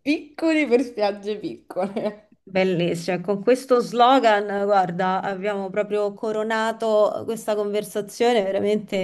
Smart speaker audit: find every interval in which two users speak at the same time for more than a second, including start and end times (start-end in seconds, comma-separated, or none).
none